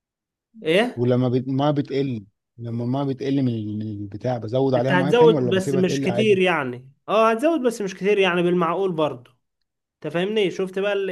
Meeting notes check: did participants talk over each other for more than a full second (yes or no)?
yes